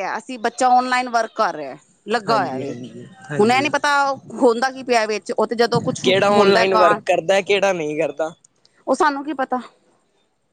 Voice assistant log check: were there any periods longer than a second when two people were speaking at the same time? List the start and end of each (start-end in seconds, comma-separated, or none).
none